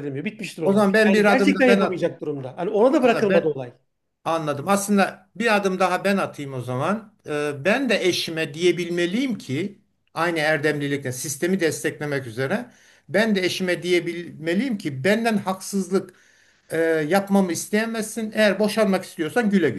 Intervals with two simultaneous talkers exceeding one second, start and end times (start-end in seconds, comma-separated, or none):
0.6-2.2